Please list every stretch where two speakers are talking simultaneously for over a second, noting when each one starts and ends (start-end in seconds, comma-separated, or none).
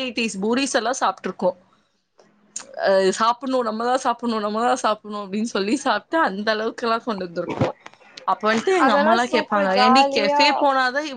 8.9-10.4